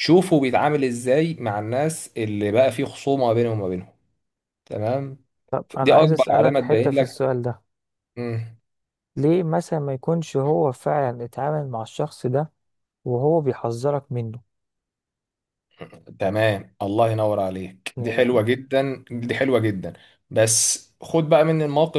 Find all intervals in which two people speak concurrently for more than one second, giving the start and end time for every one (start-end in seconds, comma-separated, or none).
5.8-7.2